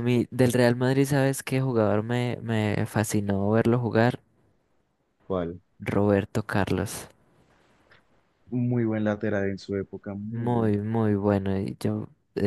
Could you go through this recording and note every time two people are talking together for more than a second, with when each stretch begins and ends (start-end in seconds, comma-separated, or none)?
none